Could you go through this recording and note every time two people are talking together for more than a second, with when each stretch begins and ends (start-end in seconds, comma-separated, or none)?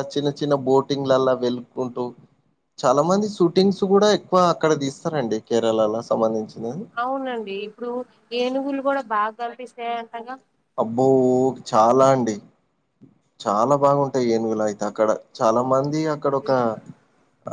none